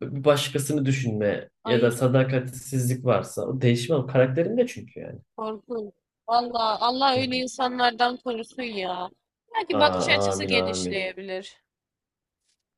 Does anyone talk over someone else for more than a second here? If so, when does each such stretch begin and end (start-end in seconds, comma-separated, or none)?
9.8-11.1